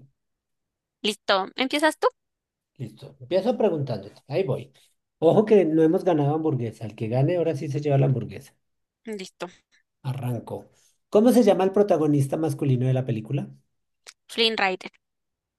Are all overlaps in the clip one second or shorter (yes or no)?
yes